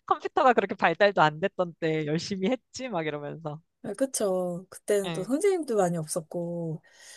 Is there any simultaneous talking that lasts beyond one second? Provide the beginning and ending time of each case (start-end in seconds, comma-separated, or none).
none